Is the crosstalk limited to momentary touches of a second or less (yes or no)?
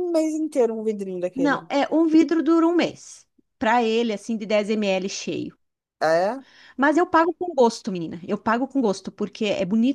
yes